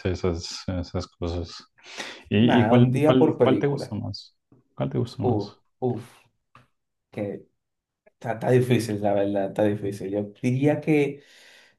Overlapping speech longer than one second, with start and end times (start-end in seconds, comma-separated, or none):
2.4-4.0